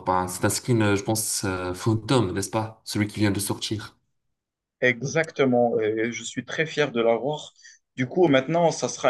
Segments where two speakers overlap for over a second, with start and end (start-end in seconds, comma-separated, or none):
none